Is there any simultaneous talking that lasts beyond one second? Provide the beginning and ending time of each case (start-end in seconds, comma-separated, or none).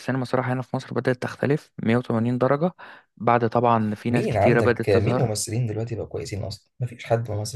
4.1-5.3